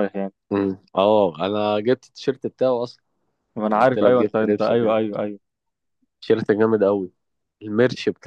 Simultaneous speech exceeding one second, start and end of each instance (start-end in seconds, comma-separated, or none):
3.6-5.0